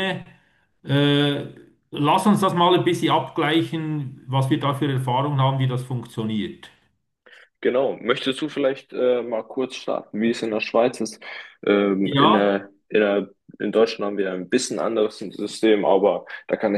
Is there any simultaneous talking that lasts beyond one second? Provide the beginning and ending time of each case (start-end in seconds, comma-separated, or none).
none